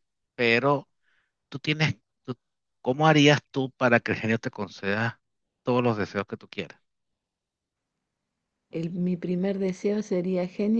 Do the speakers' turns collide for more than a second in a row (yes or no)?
no